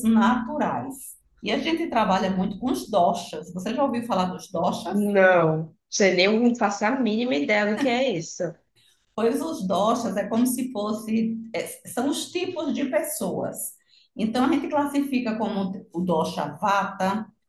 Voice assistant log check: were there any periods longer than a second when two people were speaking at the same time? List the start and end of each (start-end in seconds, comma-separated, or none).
none